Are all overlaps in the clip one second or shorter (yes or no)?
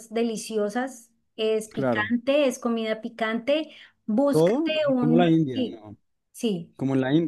no